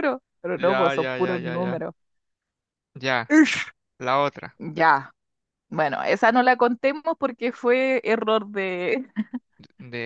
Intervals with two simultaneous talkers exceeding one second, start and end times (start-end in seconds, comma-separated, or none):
0.6-1.8